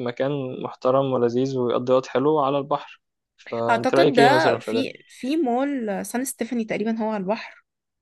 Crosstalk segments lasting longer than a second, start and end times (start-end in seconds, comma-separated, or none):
3.7-4.9